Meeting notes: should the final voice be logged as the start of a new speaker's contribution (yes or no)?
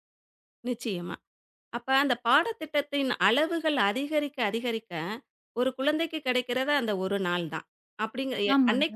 no